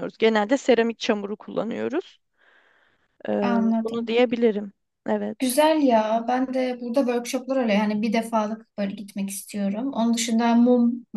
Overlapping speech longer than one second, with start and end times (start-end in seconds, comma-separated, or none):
none